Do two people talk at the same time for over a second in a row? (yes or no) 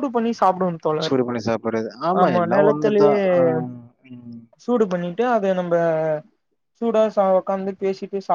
no